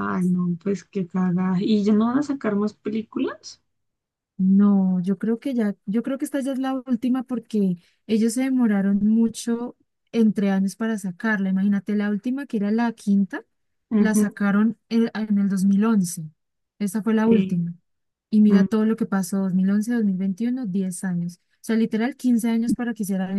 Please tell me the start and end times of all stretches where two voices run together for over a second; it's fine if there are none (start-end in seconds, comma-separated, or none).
none